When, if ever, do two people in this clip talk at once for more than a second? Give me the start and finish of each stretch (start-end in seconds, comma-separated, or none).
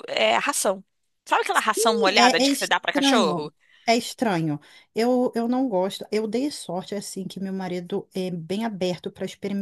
2.2-3.5